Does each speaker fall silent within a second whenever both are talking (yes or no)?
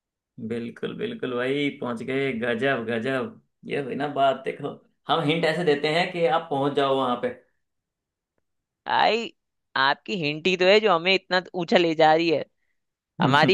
yes